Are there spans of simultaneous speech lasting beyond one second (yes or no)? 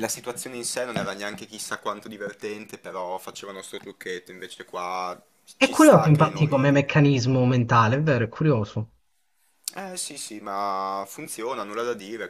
yes